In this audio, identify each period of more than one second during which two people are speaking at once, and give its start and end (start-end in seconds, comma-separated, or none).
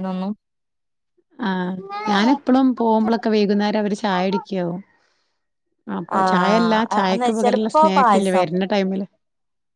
6.2-8.4